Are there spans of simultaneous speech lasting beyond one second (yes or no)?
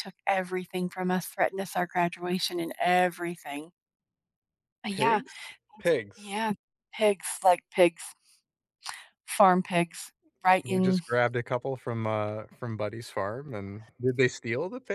no